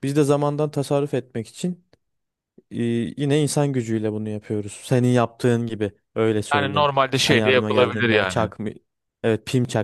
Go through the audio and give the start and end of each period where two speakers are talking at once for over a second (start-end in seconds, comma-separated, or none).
6.5-8.5